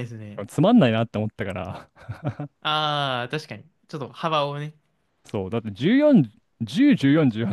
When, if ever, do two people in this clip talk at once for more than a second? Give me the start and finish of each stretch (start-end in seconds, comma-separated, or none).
none